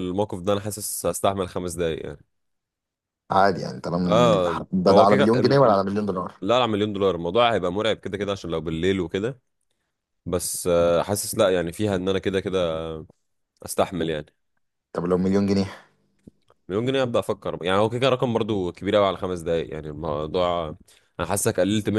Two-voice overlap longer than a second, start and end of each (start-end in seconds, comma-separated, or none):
4.0-5.8